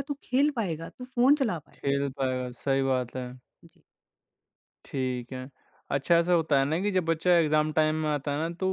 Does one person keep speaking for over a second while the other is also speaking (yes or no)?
no